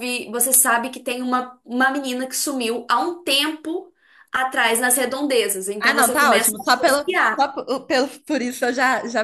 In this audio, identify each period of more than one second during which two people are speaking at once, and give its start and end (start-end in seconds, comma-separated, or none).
5.8-7.4